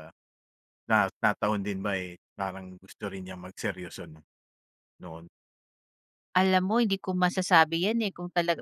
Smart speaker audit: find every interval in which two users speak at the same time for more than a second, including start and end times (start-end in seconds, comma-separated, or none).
none